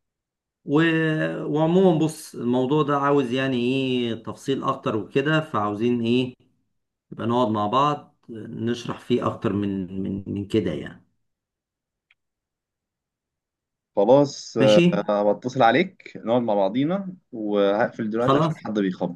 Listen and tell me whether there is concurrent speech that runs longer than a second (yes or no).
no